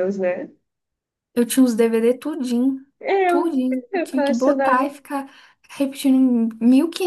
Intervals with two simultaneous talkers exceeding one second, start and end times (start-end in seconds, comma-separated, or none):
3.2-4.9